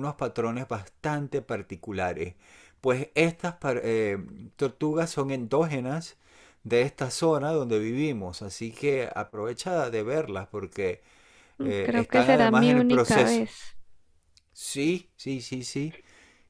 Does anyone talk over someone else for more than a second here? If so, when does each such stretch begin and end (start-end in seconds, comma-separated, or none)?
11.6-13.4